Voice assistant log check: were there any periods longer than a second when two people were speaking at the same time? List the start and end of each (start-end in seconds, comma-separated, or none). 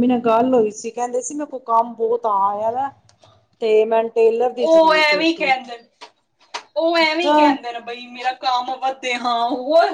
none